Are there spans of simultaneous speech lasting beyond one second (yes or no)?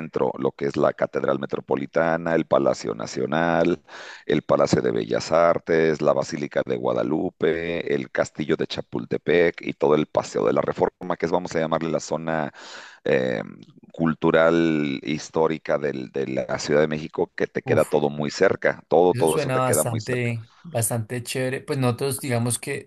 yes